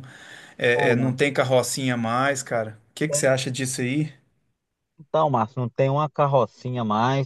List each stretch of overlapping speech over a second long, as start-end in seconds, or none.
none